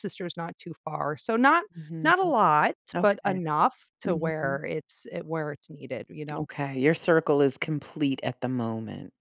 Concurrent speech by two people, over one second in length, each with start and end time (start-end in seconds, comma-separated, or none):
none